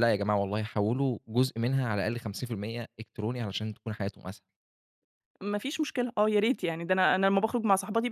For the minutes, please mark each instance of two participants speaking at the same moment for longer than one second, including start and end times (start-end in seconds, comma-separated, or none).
none